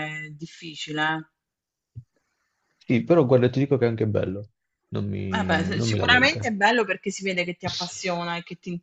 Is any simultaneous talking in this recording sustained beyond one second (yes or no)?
yes